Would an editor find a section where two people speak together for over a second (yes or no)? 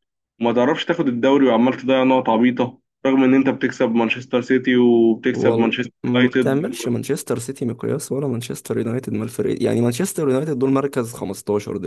yes